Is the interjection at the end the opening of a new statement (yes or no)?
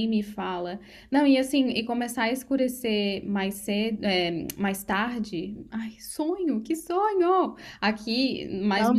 no